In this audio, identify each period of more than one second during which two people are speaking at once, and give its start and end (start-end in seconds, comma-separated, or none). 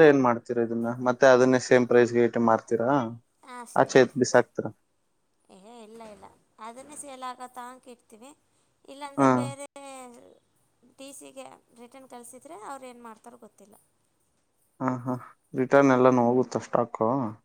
none